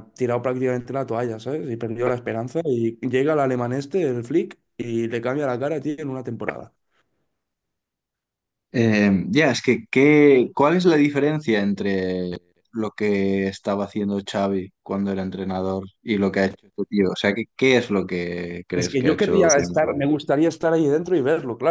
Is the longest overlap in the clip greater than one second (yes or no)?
yes